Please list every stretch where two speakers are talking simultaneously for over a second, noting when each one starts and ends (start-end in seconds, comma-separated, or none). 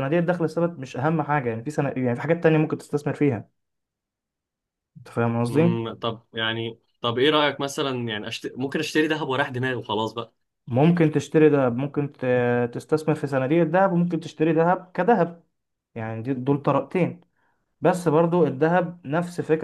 none